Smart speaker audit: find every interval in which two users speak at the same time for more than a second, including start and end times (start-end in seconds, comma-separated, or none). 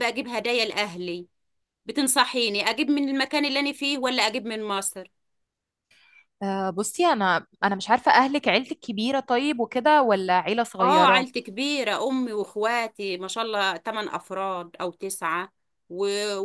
none